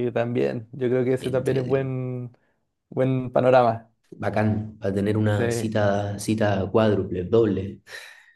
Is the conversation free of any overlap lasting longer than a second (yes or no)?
yes